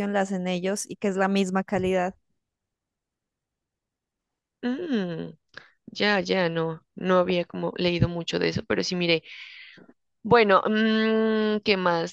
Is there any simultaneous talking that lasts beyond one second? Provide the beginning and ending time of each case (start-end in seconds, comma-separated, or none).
none